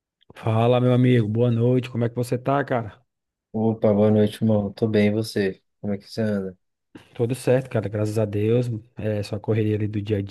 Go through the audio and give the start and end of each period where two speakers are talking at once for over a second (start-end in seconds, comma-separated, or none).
none